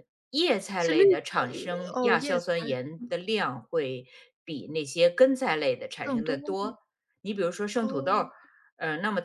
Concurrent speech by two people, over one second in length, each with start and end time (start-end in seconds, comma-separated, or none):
0.8-2.5